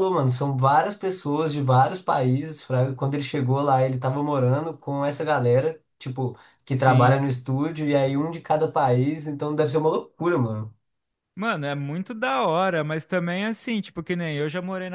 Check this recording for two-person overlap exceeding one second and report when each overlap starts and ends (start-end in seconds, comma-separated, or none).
none